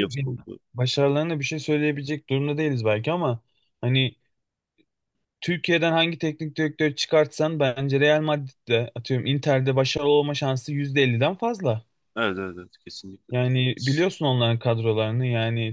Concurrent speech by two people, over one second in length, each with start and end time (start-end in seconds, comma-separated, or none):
none